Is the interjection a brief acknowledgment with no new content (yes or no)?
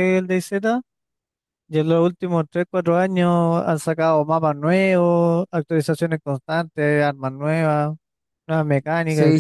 no